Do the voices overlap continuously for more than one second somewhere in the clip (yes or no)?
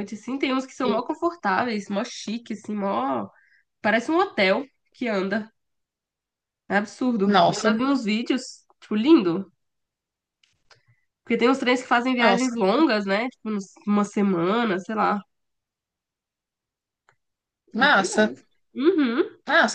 no